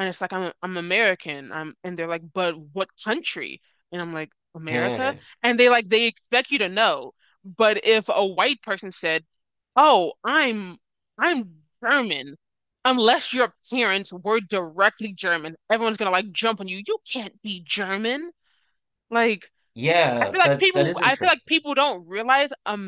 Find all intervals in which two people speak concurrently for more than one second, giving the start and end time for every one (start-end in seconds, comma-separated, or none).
20.2-21.5